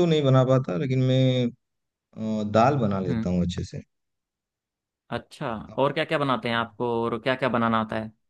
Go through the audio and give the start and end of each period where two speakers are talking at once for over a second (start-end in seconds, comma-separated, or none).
none